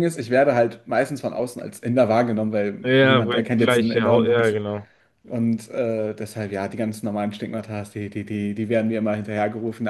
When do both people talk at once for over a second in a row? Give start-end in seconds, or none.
2.8-4.6